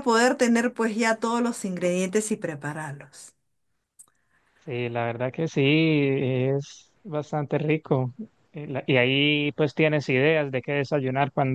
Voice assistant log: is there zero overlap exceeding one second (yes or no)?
yes